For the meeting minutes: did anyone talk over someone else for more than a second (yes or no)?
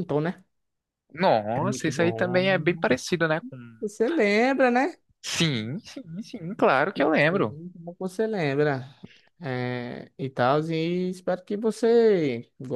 yes